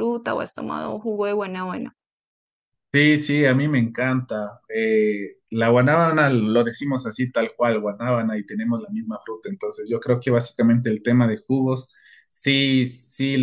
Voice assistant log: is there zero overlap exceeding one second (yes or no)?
yes